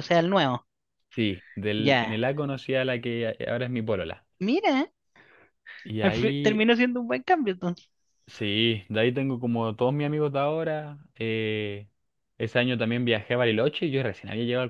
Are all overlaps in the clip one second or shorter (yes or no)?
yes